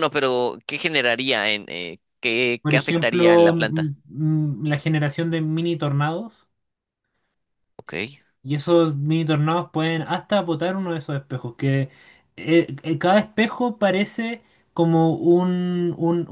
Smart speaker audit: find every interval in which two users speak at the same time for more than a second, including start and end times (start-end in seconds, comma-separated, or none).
2.6-3.9